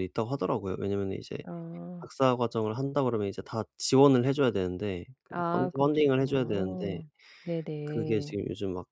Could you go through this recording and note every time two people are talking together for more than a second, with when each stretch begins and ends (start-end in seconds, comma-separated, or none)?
5.3-7.0